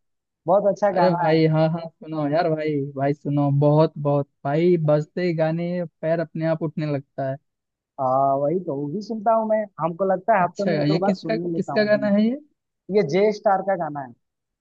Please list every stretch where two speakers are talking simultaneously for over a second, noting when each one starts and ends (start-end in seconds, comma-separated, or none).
10.4-12.1